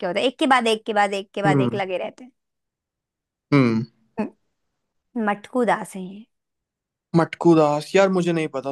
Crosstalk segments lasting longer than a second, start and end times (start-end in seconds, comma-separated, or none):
none